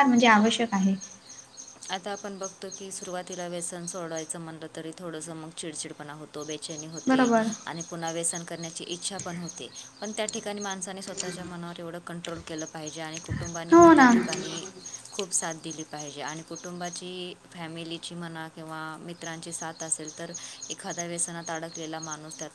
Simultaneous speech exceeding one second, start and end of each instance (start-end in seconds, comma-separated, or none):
none